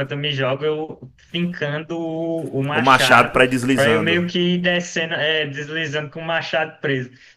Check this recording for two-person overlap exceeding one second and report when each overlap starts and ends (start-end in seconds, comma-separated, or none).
2.7-4.3